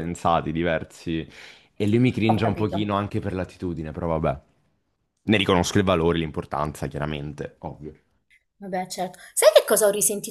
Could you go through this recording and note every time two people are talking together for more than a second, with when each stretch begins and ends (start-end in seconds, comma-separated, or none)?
none